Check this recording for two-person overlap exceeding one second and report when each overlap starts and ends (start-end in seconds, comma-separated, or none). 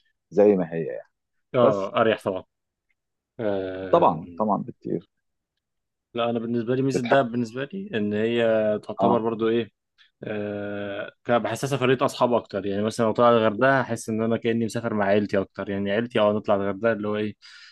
none